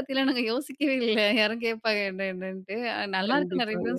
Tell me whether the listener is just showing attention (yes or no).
yes